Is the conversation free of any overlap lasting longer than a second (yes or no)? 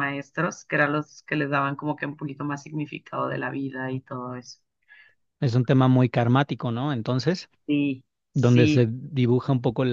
yes